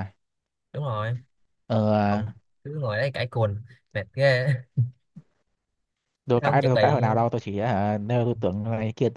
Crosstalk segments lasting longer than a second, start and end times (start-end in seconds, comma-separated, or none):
none